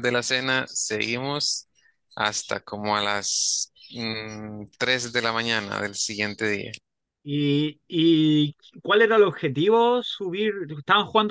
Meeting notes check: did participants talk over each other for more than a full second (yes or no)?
no